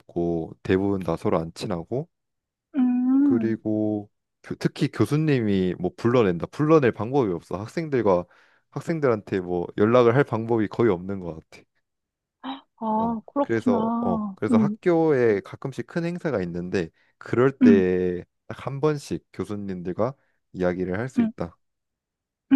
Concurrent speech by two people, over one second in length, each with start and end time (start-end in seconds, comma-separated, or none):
13.0-14.8